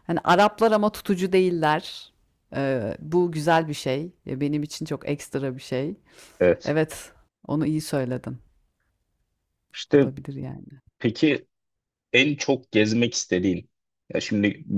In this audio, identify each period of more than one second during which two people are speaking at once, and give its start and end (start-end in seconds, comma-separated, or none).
none